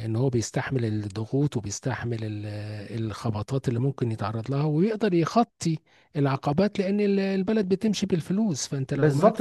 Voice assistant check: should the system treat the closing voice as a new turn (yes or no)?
yes